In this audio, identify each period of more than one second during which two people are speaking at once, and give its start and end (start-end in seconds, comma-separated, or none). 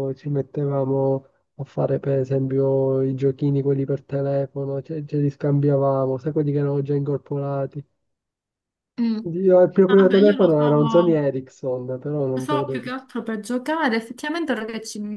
9.9-11.2